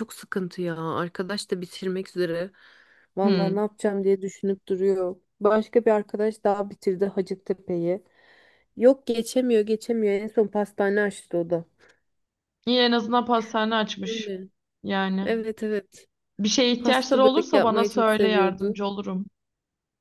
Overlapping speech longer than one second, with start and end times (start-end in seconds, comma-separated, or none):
16.8-18.8